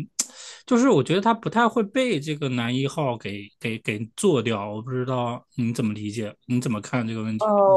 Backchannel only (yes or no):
no